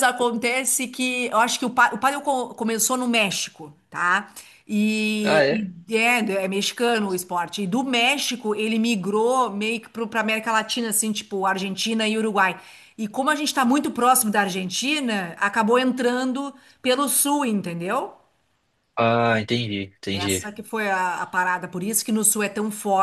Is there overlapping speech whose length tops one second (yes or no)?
no